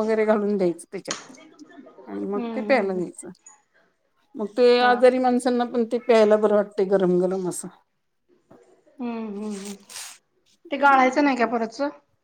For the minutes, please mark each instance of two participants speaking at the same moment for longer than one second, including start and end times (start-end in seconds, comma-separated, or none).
none